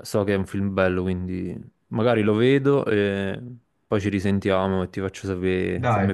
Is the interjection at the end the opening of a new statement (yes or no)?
yes